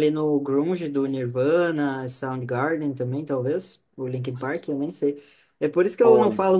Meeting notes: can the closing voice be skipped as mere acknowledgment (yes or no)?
yes